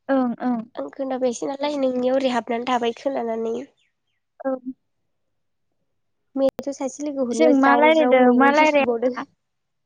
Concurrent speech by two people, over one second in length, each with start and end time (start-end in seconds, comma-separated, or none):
7.4-9.2